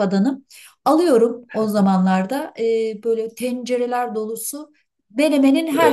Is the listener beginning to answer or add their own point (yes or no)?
no